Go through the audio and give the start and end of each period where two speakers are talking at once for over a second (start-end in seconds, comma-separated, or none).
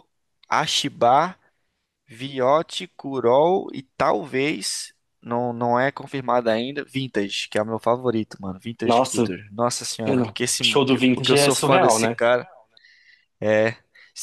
10.1-12.2